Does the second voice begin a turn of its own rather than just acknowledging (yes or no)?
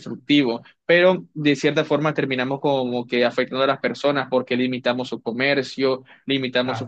yes